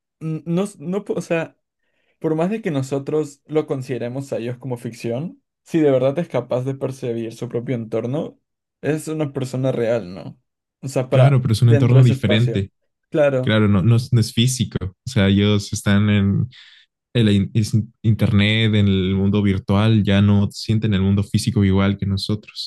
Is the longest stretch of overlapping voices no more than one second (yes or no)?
no